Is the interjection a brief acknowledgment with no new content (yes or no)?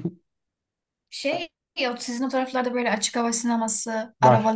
yes